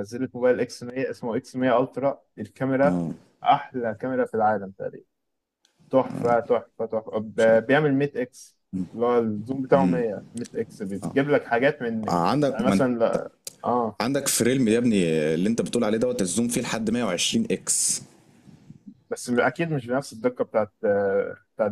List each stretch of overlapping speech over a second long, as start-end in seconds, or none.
none